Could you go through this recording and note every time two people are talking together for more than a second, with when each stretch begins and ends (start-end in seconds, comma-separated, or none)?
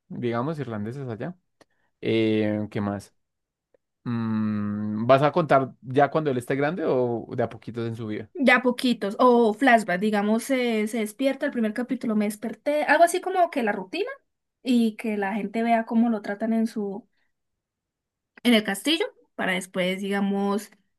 none